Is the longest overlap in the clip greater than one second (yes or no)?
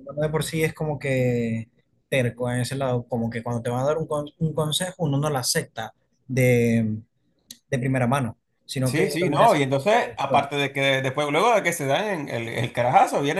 yes